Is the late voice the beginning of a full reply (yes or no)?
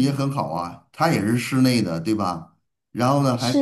no